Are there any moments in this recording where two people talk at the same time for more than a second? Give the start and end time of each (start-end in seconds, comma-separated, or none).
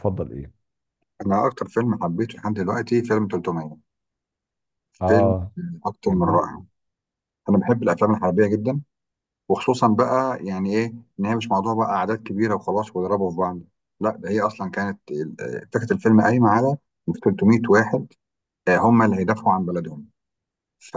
none